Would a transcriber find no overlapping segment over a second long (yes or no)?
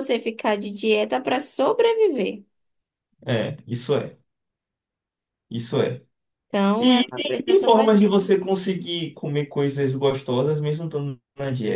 no